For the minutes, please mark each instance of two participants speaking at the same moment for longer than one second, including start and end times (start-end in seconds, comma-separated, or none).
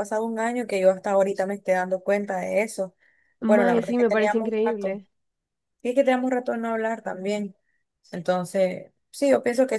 3.5-5.0